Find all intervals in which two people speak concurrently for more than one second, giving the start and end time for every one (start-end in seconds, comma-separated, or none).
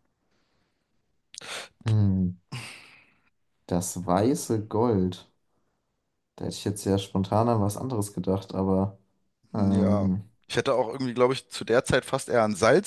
none